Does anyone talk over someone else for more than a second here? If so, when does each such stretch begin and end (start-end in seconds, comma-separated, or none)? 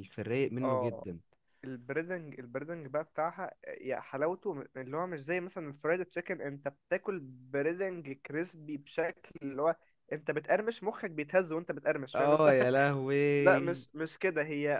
none